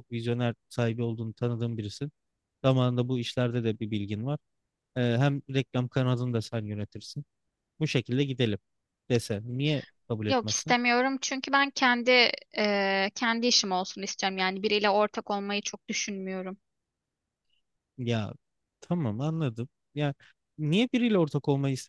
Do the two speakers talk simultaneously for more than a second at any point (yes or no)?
no